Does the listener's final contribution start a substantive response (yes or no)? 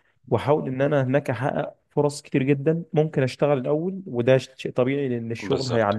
no